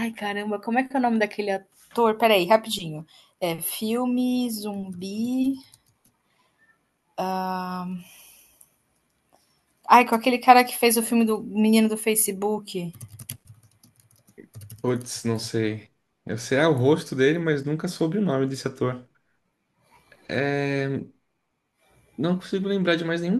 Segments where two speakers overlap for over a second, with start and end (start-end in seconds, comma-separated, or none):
none